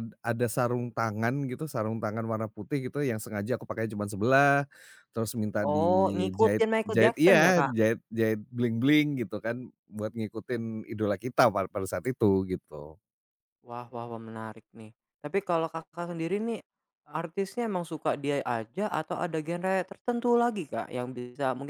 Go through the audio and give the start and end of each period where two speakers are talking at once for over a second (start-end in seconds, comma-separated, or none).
5.7-7.7